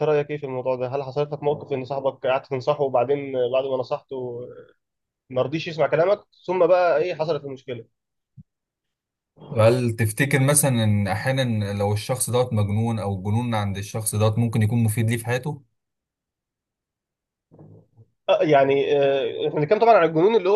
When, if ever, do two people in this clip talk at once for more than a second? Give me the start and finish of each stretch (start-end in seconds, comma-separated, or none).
none